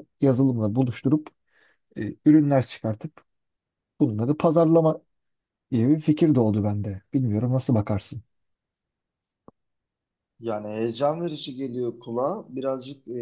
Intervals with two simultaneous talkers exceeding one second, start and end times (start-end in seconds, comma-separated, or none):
none